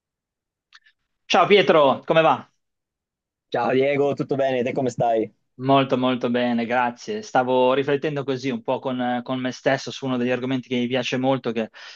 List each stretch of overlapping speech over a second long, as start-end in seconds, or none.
none